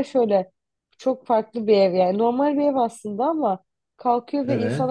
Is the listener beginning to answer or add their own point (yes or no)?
no